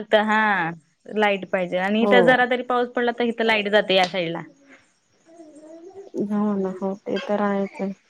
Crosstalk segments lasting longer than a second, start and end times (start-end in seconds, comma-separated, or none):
none